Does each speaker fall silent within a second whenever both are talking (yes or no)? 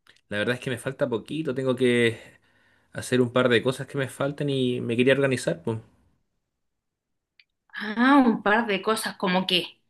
yes